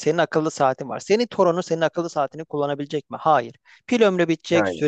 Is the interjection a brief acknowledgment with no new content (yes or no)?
yes